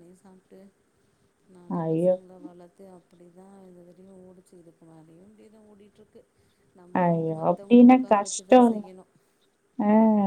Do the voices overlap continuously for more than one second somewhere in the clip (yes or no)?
yes